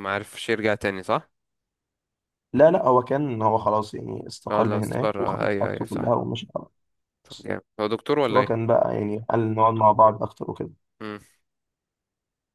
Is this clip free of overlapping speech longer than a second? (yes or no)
no